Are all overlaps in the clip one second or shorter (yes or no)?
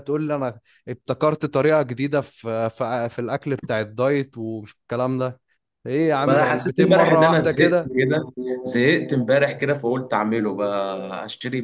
no